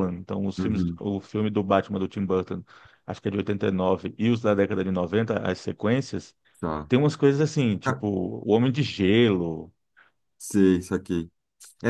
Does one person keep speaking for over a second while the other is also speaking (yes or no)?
no